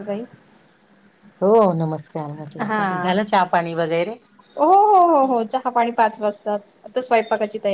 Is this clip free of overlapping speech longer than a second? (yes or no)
yes